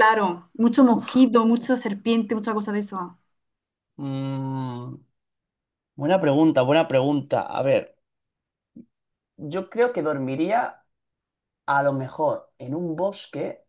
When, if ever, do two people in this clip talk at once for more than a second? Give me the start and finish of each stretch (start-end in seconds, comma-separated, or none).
none